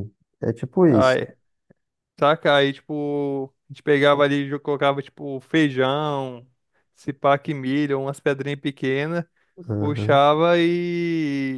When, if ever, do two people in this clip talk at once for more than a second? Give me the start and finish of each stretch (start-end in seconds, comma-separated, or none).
none